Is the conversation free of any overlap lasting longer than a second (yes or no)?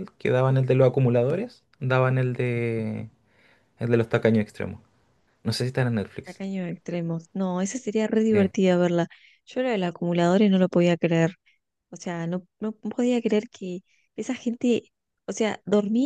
yes